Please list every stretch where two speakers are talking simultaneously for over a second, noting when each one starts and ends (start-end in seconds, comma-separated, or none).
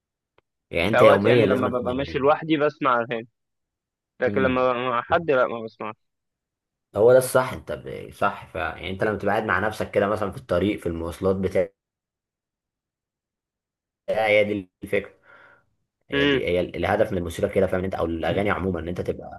0.9-2.3